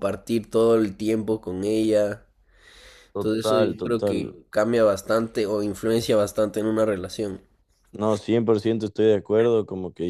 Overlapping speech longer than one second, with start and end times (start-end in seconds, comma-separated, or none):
3.1-4.4